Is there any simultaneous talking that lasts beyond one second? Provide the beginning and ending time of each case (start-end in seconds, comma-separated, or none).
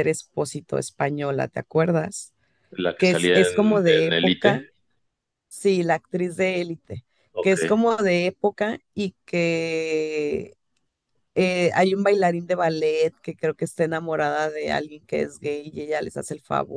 3.0-4.6